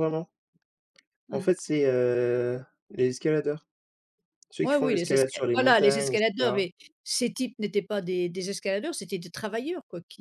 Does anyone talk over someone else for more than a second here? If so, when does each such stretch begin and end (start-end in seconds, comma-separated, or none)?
4.6-6.7